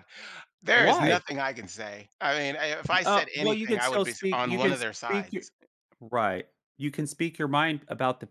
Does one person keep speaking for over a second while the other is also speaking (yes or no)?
yes